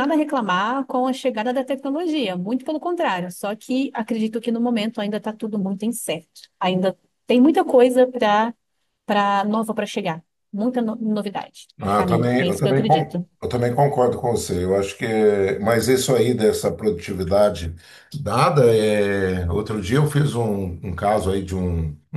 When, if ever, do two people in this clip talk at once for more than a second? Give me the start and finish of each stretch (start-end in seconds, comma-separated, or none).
11.8-13.2